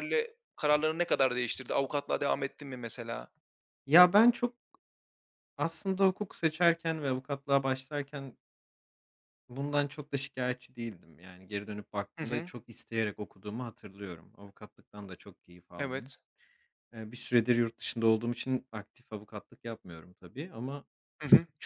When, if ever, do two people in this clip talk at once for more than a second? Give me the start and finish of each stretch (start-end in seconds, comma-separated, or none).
none